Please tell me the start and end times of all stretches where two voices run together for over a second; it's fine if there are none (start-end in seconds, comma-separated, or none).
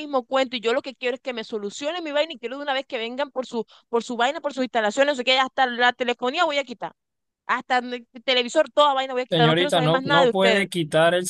9.3-10.7